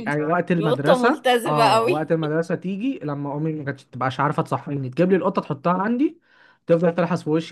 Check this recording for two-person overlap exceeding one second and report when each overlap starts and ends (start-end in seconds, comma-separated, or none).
0.6-2.1